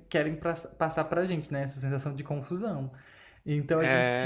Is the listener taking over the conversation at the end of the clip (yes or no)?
no